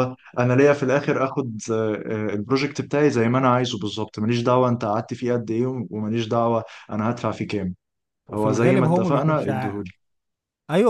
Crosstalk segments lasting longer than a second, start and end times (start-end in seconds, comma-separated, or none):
8.3-9.8